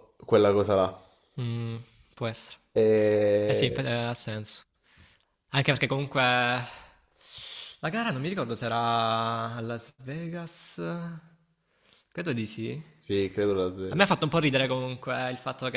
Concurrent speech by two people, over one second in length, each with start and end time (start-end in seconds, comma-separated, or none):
none